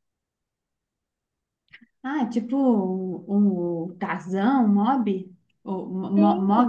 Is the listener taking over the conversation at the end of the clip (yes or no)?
yes